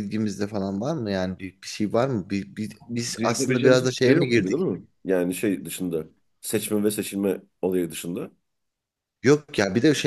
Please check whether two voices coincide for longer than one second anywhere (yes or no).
yes